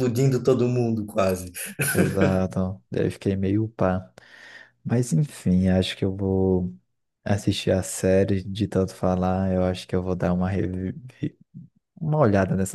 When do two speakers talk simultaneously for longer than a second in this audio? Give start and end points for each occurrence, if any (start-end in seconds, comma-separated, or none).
none